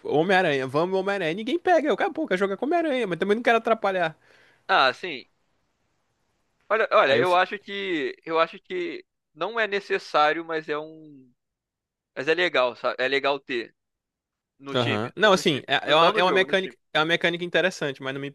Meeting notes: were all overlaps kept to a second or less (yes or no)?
no